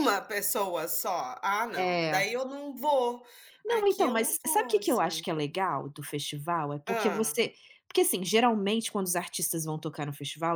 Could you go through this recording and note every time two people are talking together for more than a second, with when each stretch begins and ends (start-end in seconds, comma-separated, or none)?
3.7-5.2